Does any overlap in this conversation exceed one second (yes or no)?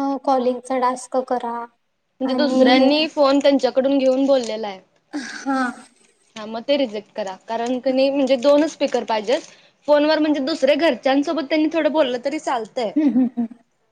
no